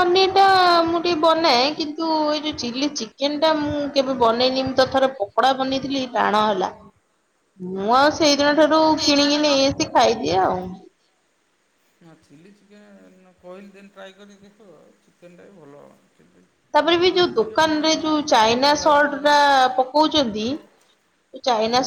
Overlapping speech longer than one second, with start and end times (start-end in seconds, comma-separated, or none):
17.1-19.4